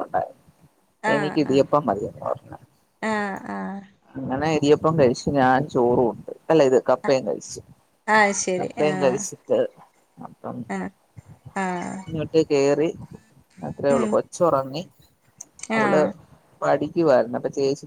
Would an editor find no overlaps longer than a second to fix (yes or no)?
yes